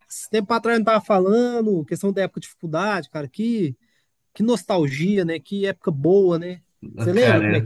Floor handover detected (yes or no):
yes